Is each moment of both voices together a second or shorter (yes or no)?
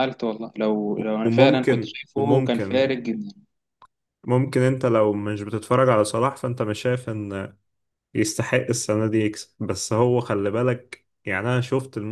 no